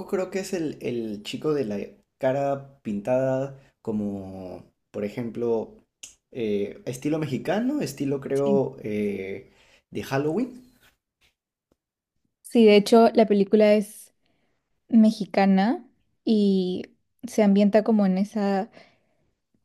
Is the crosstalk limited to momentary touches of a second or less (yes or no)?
yes